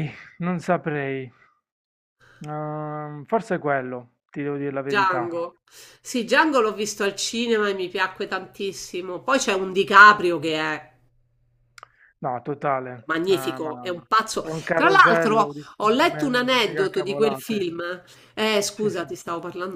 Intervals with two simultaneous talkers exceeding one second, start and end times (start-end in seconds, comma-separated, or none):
13.1-17.6